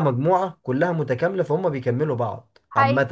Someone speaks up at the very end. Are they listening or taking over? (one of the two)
taking over